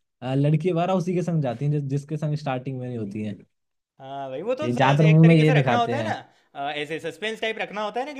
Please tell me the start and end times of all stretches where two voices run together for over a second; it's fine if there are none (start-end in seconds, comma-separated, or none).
4.6-6.1